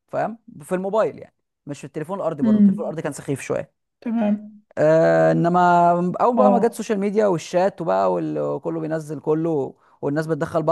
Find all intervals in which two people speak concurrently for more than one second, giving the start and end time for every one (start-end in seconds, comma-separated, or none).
none